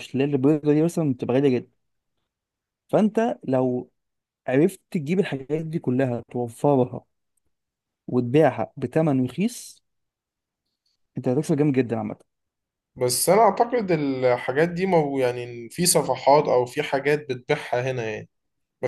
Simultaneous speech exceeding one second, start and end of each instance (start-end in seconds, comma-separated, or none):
none